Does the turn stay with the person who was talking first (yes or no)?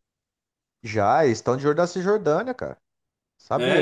no